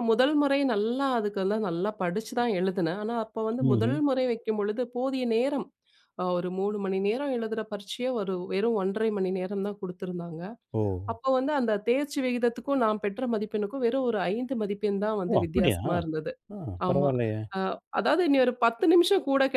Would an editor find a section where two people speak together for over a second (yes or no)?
no